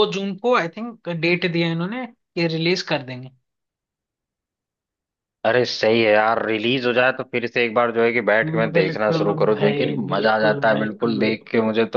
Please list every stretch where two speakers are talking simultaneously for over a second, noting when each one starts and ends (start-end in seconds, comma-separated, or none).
8.8-11.3